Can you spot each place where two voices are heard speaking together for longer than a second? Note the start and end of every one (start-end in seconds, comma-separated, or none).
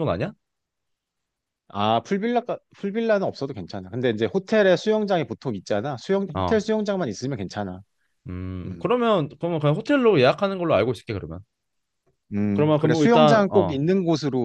12.5-13.8